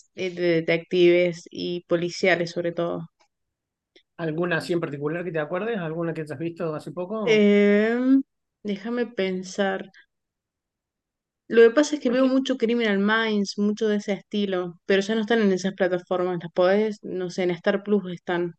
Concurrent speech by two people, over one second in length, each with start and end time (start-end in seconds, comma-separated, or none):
none